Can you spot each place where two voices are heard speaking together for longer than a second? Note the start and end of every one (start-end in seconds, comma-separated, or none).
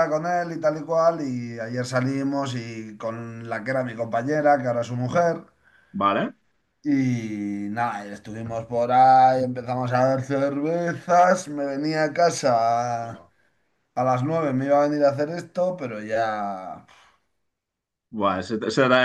none